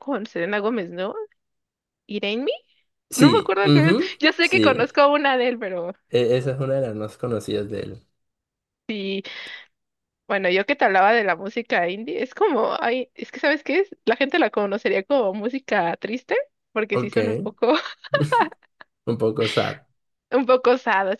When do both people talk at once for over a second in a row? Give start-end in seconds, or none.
3.1-5.0